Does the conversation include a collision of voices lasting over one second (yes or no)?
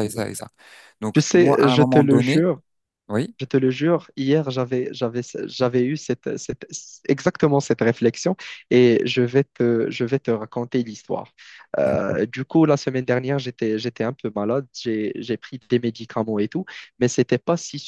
yes